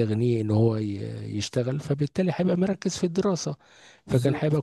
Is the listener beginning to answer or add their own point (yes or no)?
no